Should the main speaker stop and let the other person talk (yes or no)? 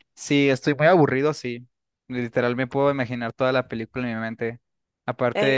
no